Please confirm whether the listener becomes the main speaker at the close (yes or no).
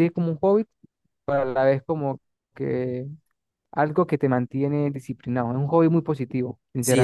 yes